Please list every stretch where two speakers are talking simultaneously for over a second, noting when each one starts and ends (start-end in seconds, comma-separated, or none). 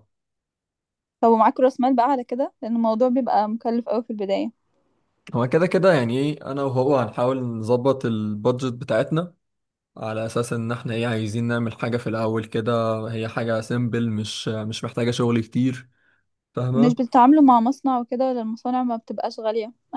none